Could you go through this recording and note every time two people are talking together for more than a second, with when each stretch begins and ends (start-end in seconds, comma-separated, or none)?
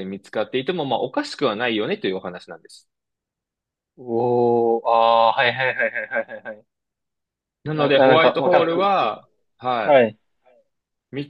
7.7-9.2